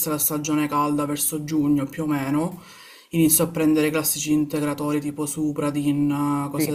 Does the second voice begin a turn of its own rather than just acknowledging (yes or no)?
yes